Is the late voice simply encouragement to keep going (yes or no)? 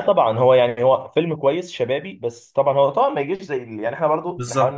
yes